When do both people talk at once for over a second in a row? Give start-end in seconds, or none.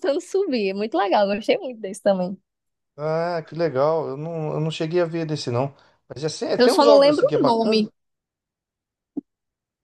6.5-7.8